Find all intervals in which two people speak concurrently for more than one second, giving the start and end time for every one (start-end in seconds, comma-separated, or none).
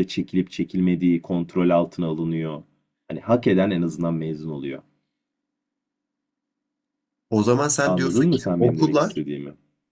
7.8-9.2